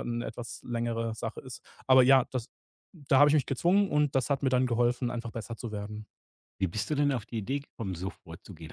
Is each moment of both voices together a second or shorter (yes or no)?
yes